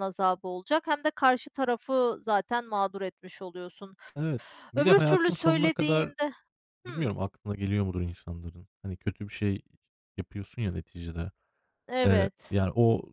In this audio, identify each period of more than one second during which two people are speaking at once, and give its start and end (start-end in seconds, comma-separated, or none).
4.8-6.1